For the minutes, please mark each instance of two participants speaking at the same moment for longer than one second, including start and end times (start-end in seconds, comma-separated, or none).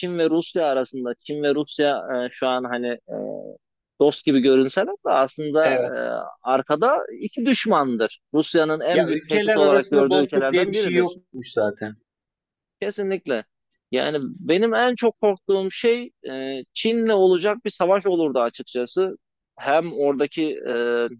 8.9-11.2